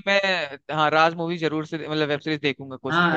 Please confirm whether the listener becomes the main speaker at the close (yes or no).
yes